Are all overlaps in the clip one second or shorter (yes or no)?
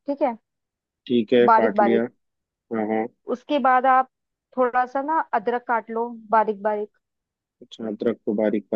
yes